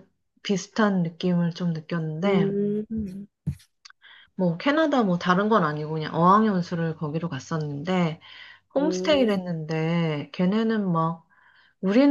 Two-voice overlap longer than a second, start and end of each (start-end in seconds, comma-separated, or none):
none